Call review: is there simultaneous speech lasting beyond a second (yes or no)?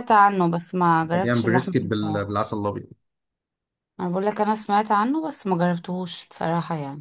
yes